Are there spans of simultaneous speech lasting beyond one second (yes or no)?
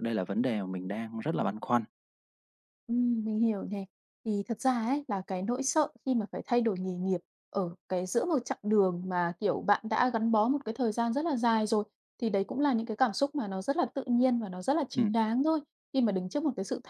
no